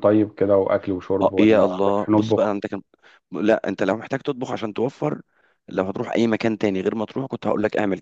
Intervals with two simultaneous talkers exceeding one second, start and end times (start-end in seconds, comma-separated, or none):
1.2-2.5